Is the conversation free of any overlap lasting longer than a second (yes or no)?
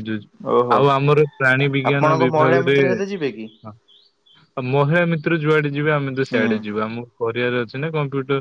no